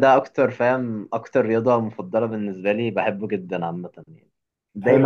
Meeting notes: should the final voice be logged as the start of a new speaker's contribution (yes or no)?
yes